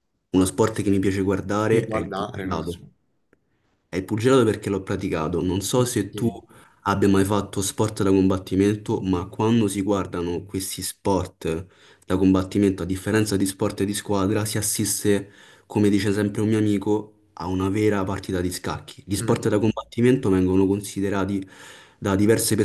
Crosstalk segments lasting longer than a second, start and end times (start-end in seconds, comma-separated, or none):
1.6-2.8